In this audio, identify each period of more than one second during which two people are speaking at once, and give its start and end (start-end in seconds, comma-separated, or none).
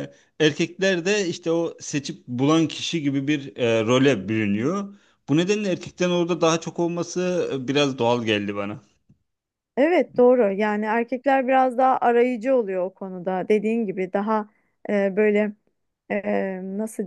none